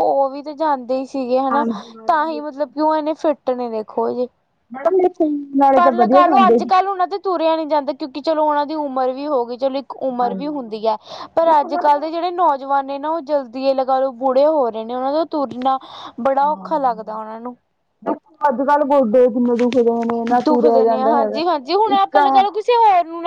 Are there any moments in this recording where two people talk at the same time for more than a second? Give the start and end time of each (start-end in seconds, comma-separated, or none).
none